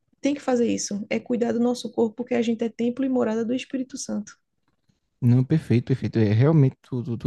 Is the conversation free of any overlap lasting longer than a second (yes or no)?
yes